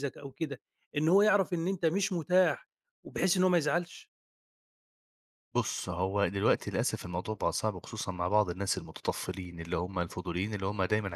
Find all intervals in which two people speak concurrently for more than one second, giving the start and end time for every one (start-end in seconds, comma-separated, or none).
none